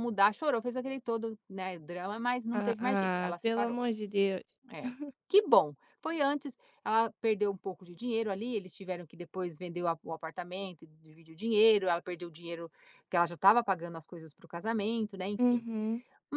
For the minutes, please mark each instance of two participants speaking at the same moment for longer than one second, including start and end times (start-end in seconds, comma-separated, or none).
2.5-3.8